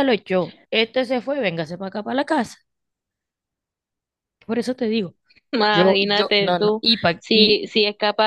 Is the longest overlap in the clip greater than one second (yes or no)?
yes